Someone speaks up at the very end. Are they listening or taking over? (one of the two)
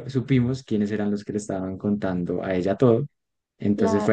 listening